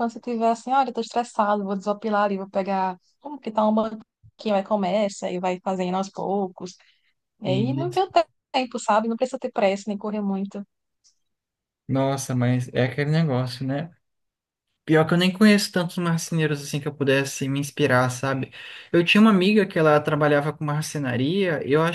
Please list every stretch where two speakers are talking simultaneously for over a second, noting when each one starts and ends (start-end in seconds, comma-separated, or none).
none